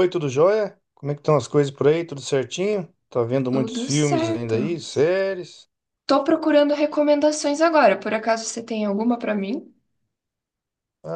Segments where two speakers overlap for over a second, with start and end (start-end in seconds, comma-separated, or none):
3.5-4.8